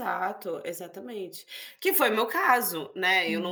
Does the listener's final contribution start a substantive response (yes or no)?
no